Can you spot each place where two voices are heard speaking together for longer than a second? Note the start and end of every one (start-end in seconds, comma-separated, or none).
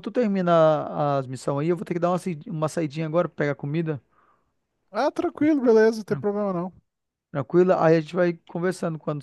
none